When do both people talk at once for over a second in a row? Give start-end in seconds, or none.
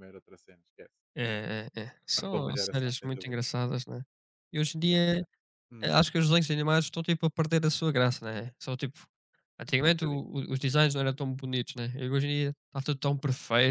2.1-3.4